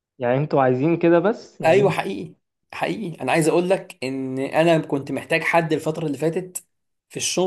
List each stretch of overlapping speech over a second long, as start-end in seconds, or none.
none